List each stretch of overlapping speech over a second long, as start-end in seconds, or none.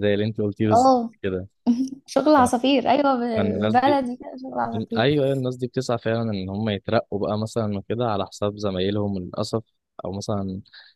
none